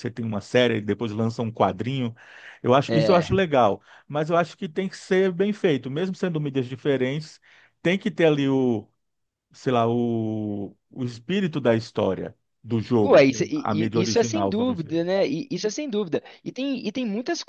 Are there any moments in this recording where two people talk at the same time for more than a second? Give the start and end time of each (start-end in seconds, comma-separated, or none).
13.0-15.2